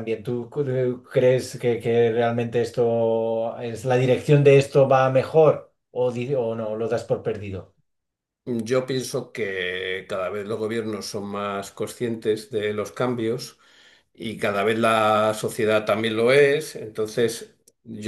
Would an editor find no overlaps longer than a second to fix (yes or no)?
yes